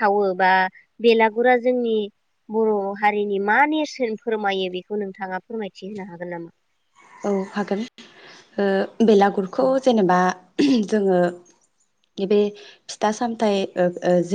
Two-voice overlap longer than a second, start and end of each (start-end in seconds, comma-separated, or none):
none